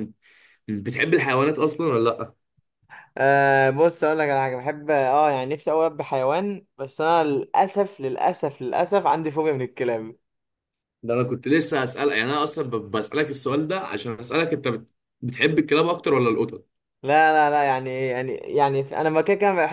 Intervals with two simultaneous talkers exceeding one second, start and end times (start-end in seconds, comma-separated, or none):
none